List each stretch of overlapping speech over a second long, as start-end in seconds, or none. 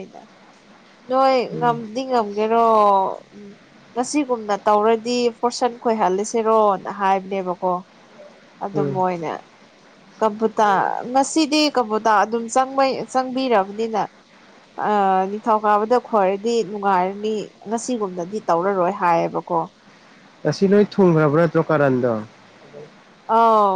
none